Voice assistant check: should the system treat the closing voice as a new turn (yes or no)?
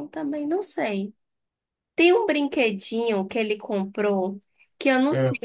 no